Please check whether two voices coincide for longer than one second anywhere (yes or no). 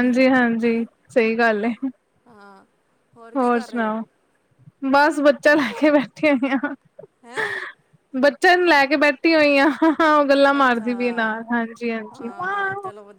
no